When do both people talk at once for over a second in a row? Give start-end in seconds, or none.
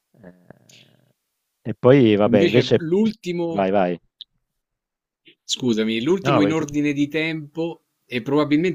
none